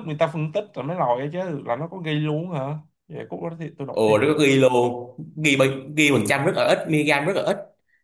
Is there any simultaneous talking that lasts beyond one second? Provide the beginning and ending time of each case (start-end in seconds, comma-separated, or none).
none